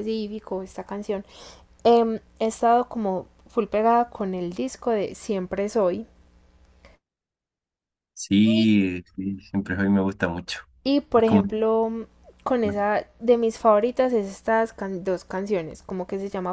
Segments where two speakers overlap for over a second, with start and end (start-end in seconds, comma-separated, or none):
none